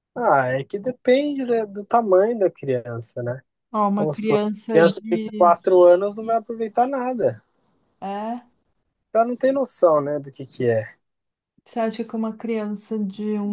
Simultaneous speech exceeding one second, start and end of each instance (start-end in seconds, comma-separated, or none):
4.0-5.5